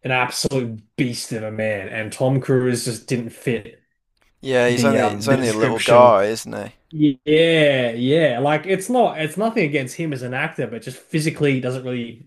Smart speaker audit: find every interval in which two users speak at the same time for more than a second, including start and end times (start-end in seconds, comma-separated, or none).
4.7-6.2